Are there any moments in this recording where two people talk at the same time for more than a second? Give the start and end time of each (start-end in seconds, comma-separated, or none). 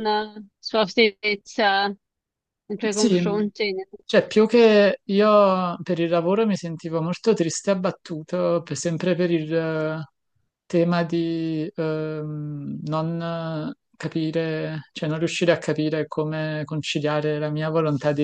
none